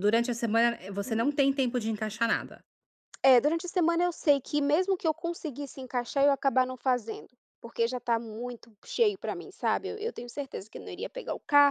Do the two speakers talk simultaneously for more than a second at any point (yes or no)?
no